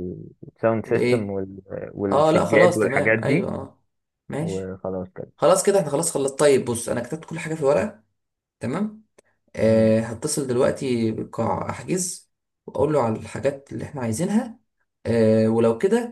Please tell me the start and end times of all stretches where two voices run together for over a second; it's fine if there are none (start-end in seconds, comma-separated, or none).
2.1-3.5